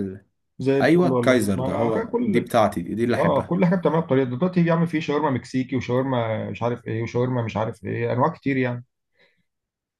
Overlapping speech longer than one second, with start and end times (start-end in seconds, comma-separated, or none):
0.8-2.4